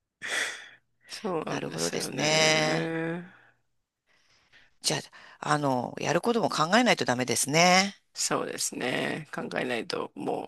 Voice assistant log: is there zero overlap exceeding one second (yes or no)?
no